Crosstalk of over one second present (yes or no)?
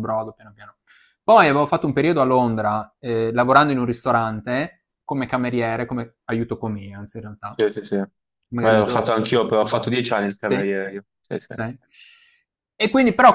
no